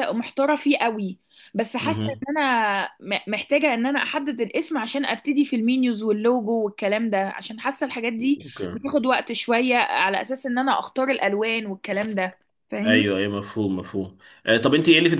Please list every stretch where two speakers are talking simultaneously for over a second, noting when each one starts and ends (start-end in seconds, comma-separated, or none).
none